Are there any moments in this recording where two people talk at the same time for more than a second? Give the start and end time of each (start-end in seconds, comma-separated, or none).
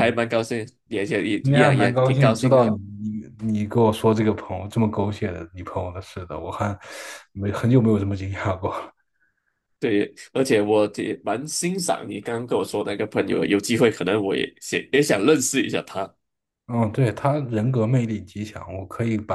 1.4-2.6